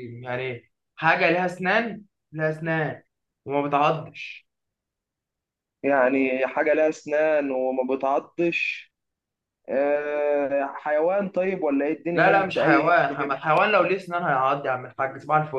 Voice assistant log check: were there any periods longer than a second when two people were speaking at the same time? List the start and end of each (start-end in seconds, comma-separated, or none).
12.1-13.4